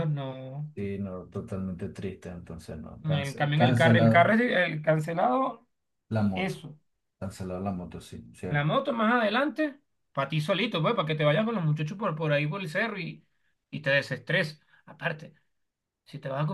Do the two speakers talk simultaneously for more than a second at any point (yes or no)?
yes